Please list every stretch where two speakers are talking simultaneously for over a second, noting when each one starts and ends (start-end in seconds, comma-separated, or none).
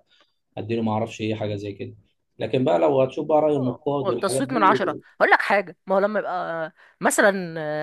3.5-4.8